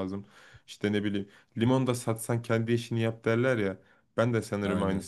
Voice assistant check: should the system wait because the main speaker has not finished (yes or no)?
yes